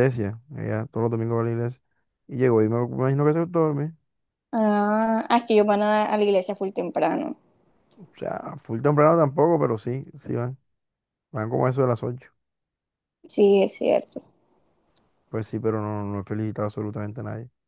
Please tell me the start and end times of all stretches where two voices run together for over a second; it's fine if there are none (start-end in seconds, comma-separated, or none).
none